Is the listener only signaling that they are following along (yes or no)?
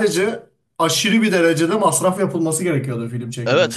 no